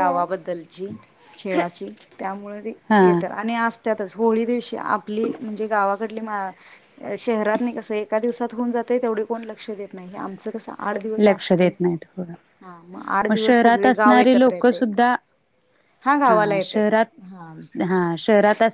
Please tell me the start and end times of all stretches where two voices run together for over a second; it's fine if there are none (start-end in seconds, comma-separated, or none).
13.3-14.9